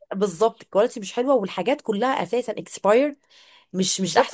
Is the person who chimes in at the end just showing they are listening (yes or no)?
no